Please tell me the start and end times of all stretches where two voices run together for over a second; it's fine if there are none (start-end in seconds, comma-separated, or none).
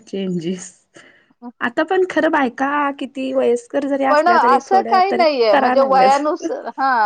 4.1-6.1